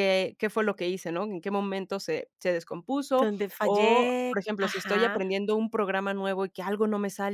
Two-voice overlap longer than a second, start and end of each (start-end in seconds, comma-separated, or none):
3.2-5.2